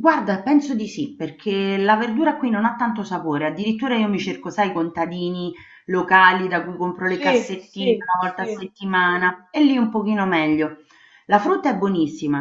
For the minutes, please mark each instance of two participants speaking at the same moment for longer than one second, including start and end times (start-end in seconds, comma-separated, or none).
7.0-8.7